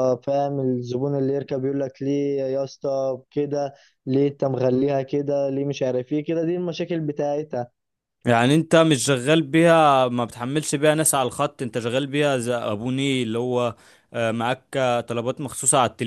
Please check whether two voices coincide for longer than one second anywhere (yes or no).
no